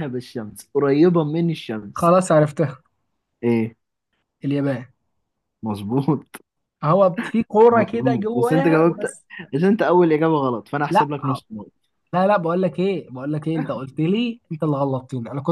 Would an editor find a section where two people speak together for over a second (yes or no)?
yes